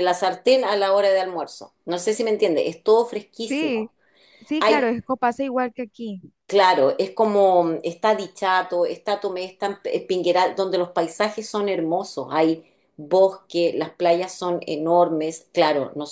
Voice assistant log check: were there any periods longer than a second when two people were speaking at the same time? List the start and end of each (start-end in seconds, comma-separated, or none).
none